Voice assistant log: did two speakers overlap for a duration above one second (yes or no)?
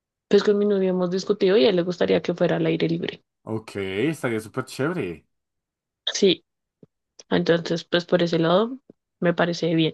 no